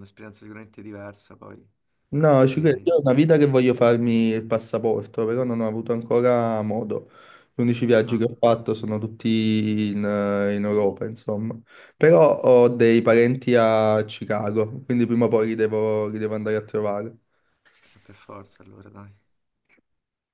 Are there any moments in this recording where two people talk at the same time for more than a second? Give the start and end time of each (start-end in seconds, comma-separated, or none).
none